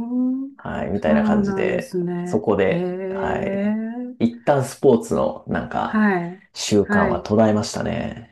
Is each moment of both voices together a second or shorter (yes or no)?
no